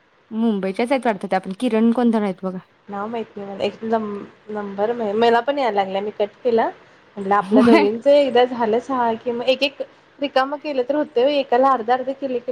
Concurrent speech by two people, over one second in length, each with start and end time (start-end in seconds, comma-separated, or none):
none